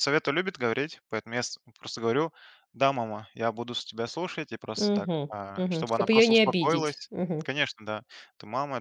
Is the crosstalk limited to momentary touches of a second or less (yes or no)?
no